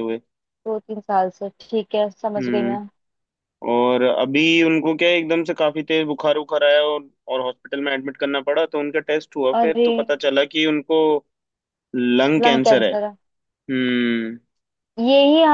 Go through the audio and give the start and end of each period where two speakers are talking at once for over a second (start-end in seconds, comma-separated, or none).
none